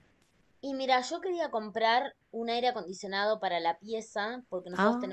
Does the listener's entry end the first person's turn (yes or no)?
no